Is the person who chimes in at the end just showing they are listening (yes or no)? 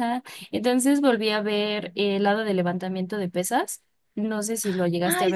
no